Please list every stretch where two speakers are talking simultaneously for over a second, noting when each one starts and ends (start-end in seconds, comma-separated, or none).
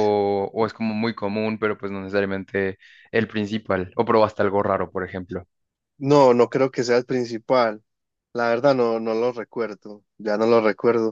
none